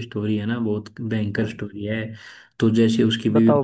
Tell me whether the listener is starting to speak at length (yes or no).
no